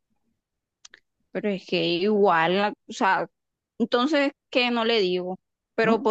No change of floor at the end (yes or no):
yes